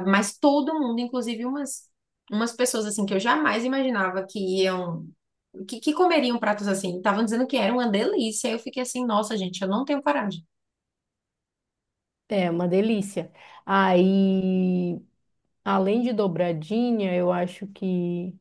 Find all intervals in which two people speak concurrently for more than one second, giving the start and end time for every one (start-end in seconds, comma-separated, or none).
none